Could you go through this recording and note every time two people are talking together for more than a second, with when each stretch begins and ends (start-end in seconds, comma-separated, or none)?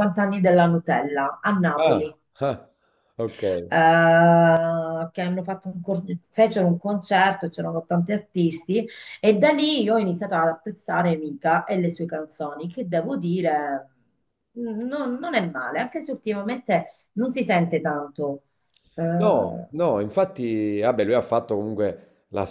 none